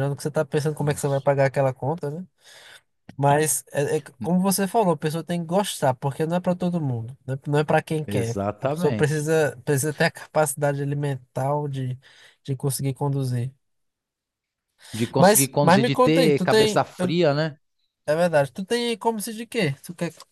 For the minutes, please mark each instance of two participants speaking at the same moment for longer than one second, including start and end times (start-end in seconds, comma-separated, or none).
8.1-9.3, 15.2-17.2